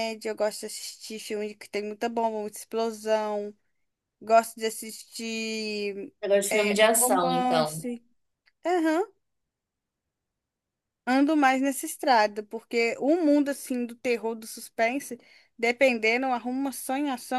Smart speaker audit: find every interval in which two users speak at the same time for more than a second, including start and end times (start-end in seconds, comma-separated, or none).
6.5-7.8